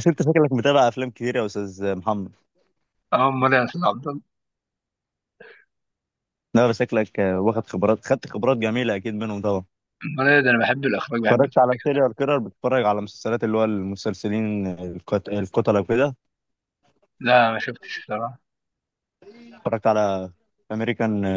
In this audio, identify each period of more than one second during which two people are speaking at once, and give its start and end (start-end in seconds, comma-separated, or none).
none